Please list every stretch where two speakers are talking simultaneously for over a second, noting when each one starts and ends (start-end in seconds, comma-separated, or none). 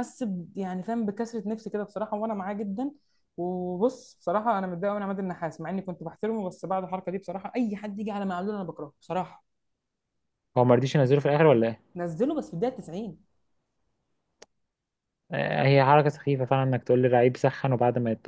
none